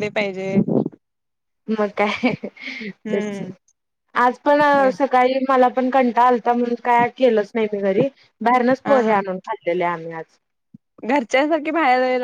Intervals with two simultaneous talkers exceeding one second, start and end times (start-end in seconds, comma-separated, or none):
none